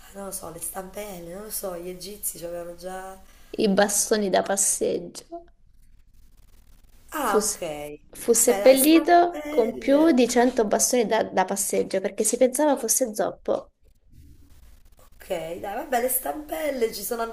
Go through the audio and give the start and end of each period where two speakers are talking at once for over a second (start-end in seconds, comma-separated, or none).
8.3-10.2